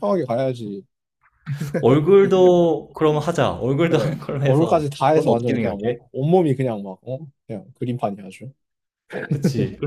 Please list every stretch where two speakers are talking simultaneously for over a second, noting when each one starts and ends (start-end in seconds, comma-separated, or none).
3.9-6.0